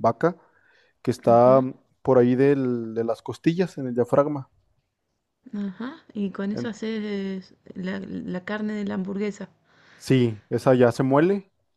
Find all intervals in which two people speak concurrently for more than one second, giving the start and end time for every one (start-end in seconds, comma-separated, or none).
none